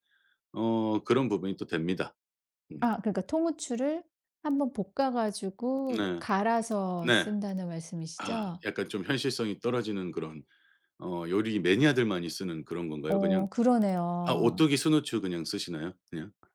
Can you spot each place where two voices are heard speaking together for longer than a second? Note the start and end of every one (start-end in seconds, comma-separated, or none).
none